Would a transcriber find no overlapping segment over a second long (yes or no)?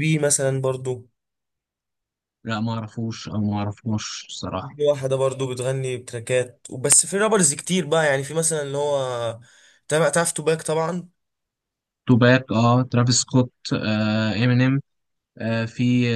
yes